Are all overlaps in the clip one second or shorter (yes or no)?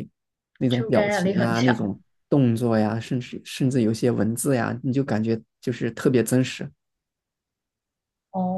no